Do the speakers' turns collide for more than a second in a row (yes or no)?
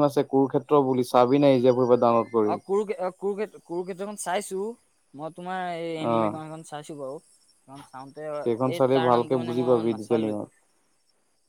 yes